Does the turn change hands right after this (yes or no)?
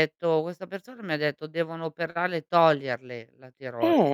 yes